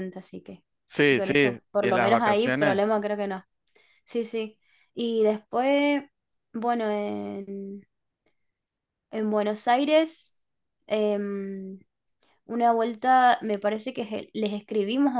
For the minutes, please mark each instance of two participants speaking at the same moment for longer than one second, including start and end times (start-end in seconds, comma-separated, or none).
1.1-2.8